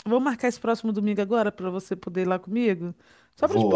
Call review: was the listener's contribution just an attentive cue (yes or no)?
no